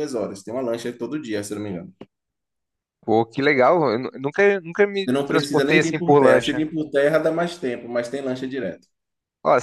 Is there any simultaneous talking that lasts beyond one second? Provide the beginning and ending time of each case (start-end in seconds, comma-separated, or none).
5.1-6.6